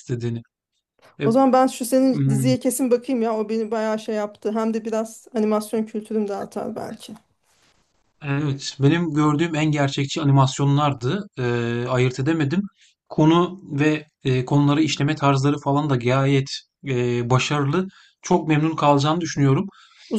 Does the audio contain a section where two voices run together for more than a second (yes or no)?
no